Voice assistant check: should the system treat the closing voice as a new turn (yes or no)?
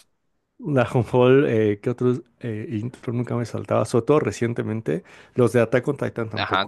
yes